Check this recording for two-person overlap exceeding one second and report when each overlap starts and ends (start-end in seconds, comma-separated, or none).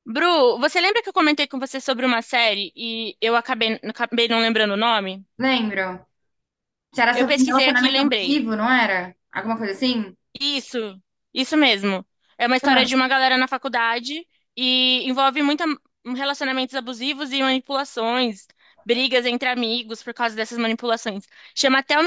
7.1-8.4